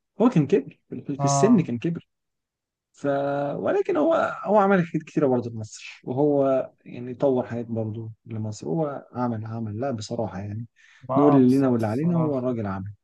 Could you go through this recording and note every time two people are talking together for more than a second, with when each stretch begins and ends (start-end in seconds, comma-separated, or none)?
11.2-12.5